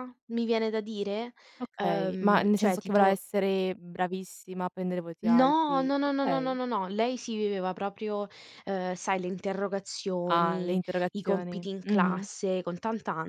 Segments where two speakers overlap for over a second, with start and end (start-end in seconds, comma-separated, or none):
1.8-3.2, 5.2-6.6, 10.3-12.3